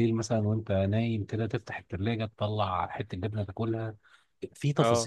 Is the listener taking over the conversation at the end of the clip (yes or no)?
no